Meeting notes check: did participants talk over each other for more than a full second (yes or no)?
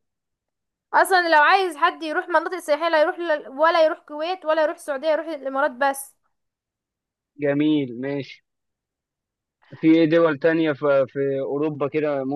no